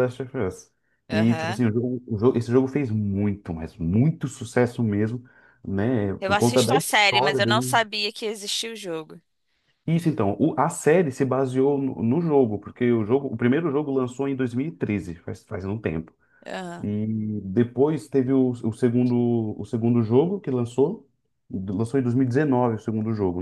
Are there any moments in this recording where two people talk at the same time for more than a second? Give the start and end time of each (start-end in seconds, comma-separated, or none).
6.2-7.8